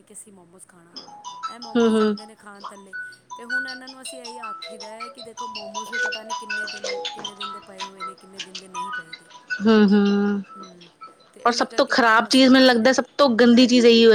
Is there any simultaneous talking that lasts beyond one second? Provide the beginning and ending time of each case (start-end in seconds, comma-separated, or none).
11.5-13.0